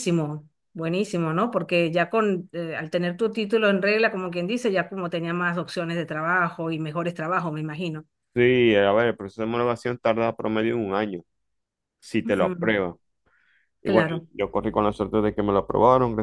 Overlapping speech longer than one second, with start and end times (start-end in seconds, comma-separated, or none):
none